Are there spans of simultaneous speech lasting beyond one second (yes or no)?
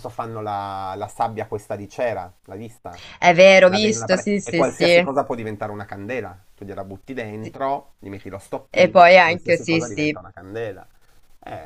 yes